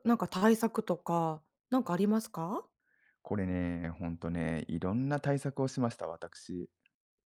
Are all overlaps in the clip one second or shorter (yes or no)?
yes